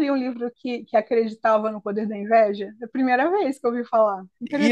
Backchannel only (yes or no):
no